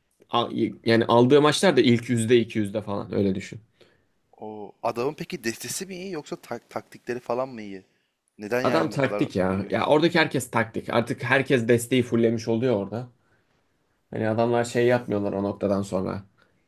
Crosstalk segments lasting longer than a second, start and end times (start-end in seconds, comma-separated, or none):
8.6-9.9